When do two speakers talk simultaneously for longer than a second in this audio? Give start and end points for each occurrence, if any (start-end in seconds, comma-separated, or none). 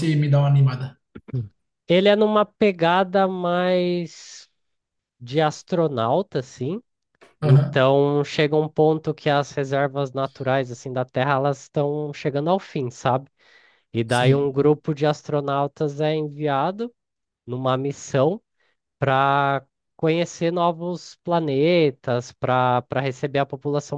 none